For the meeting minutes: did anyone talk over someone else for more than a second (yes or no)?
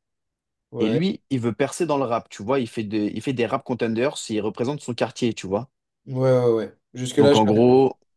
no